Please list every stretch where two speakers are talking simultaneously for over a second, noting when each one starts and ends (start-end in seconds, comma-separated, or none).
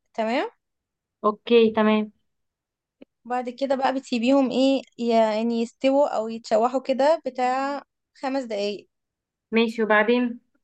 none